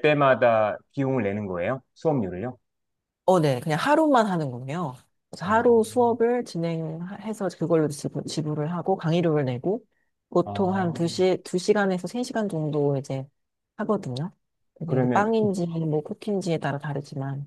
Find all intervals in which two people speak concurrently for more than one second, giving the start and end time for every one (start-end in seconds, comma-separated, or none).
none